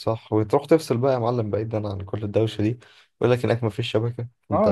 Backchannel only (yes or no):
no